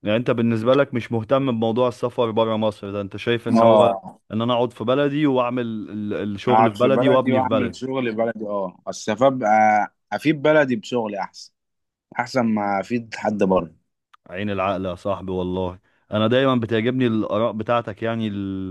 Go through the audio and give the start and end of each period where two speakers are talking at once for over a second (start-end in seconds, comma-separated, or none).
6.5-7.8